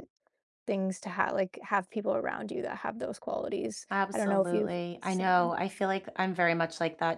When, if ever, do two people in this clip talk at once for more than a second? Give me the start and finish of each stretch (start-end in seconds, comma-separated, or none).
3.9-5.5